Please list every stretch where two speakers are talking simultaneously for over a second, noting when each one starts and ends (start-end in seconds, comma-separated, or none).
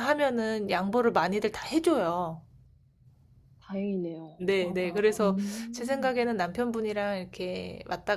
4.4-6.1